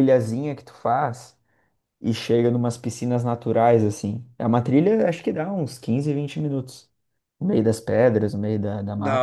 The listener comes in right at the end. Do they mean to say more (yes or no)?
yes